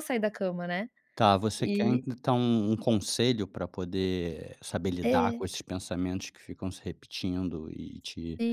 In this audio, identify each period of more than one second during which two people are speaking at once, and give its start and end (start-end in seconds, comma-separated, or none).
none